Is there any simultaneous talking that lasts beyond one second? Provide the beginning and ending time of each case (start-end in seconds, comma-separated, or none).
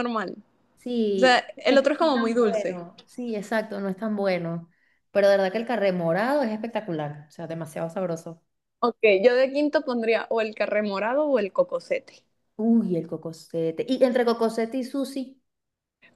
1.2-2.8